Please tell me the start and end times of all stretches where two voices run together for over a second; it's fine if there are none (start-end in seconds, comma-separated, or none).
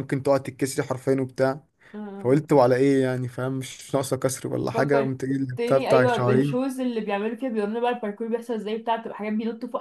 4.7-6.7